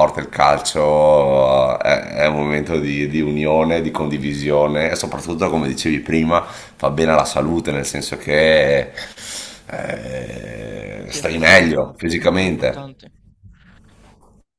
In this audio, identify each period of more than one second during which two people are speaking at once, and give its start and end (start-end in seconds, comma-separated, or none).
11.0-12.9